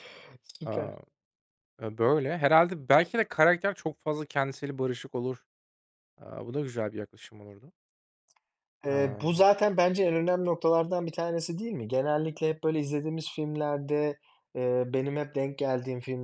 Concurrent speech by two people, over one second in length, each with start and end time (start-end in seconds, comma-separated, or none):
none